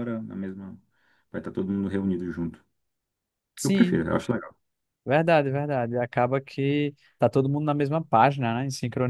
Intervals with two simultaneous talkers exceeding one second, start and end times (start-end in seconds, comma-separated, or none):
none